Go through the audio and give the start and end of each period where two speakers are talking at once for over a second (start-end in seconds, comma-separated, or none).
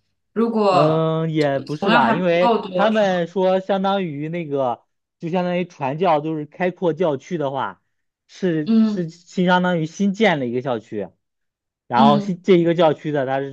1.8-3.2